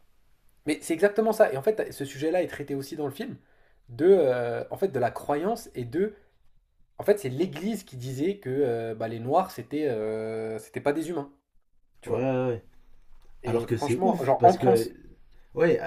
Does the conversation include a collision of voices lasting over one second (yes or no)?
yes